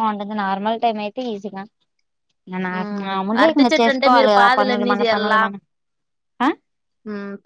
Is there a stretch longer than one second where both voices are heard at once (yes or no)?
yes